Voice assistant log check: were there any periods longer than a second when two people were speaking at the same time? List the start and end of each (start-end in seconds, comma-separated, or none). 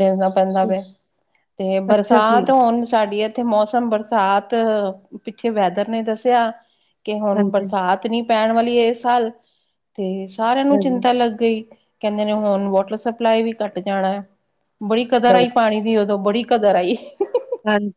none